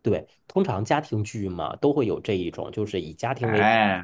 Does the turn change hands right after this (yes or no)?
no